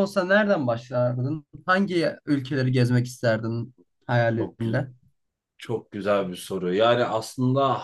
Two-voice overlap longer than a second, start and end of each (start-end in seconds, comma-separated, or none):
none